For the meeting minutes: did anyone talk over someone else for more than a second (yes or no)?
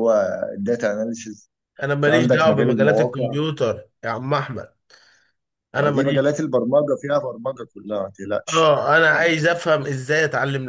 yes